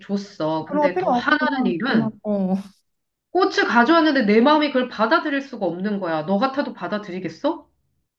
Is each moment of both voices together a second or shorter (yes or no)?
no